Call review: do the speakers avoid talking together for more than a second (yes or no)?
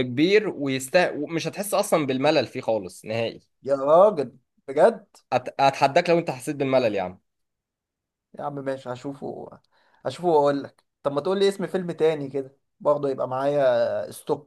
yes